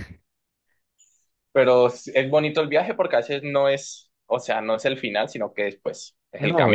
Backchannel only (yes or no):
no